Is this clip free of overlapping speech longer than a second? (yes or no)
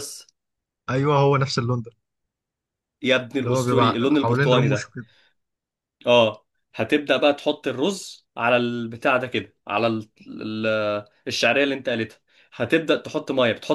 no